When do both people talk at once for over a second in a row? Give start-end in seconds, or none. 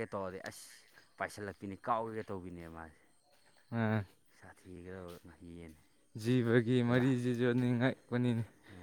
none